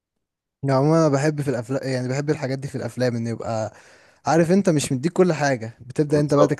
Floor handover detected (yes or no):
no